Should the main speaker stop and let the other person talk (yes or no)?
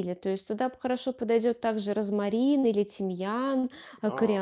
no